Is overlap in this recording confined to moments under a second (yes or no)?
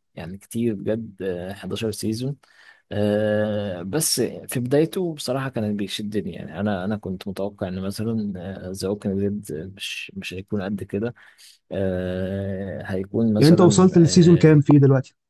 no